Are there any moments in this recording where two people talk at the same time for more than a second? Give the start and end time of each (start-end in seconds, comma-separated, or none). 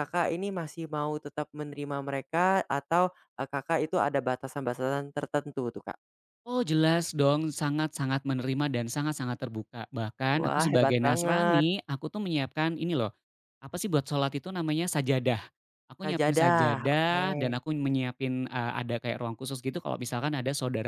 10.4-11.6, 16.0-17.3